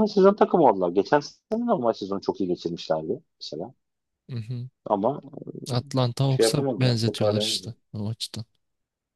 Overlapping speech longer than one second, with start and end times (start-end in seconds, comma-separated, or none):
6.3-7.7